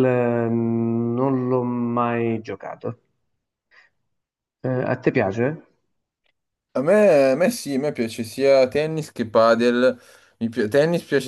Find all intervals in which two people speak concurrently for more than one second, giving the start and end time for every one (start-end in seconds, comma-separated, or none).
none